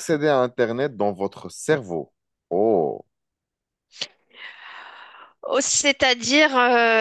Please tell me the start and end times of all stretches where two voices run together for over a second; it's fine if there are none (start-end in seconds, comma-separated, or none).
none